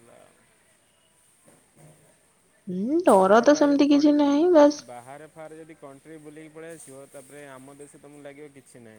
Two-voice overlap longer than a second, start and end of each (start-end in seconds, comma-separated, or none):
3.1-4.8